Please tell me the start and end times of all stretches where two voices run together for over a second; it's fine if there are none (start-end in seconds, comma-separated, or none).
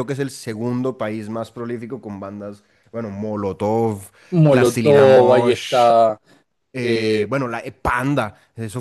4.5-5.9